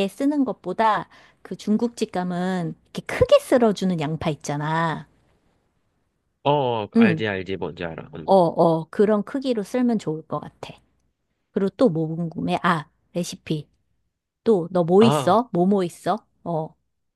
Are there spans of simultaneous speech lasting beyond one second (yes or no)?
no